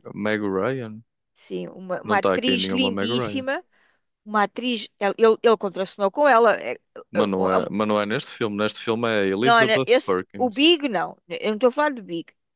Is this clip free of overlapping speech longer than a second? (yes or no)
no